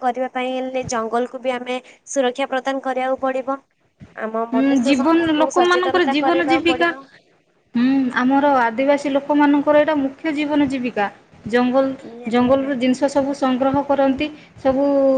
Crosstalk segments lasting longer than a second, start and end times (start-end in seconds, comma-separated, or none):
4.5-6.9